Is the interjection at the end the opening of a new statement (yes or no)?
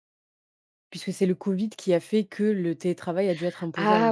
yes